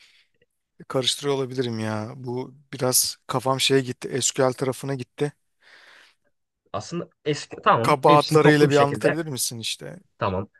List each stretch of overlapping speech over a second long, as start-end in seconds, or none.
7.8-9.2